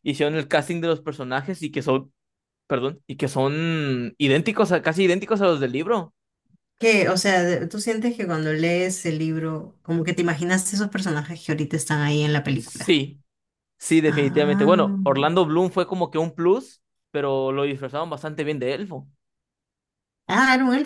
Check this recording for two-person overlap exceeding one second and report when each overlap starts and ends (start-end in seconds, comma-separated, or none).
none